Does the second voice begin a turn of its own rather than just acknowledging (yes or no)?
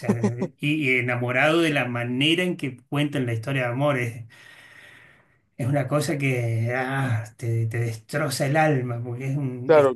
yes